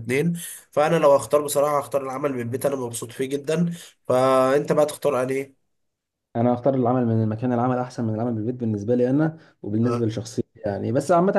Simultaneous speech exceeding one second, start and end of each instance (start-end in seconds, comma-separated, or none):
none